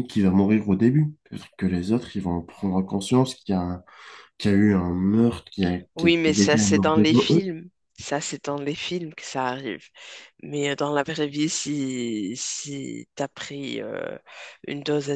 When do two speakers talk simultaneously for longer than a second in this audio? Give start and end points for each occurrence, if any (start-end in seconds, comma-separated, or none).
6.0-7.4